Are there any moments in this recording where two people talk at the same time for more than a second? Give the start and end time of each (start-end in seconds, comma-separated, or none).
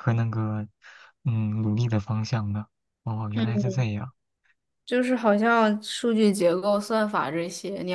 none